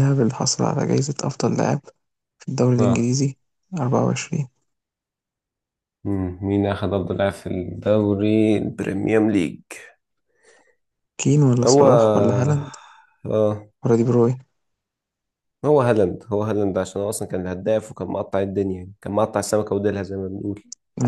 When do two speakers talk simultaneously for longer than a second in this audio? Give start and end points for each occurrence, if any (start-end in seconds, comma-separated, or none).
none